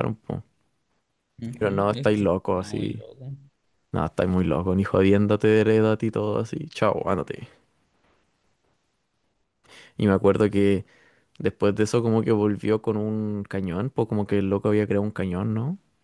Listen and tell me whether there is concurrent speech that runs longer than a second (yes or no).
yes